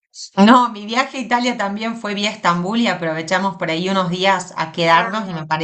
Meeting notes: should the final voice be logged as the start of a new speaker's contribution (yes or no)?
no